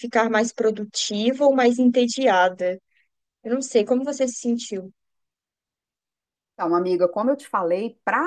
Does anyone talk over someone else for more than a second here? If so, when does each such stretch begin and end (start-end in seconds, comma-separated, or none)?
none